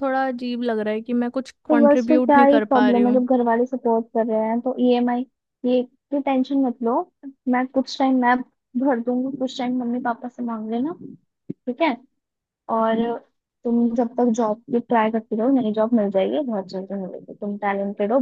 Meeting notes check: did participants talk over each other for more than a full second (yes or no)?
yes